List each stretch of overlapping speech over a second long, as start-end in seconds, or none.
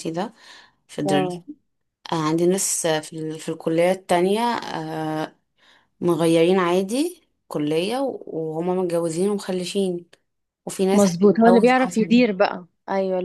10.9-12.1